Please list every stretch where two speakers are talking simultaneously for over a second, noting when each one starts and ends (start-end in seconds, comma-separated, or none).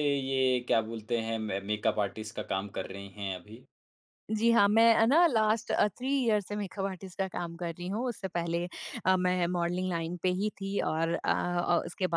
none